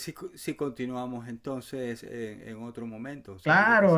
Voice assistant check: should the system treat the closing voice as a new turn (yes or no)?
yes